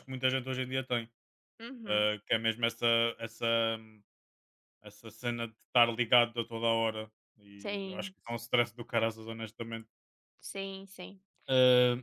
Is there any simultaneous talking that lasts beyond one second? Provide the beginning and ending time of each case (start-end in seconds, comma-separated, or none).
none